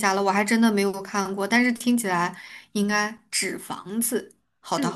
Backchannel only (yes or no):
no